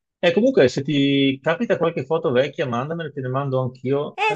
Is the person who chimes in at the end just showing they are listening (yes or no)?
no